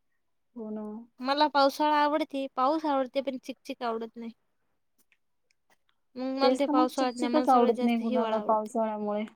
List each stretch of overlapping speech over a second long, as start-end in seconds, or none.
6.4-8.7